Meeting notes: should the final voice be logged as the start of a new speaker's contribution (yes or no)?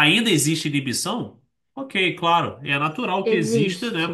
no